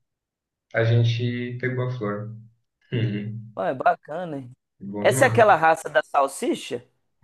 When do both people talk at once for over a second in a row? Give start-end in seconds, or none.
none